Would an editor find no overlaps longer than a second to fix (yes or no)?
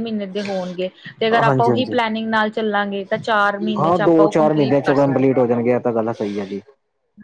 no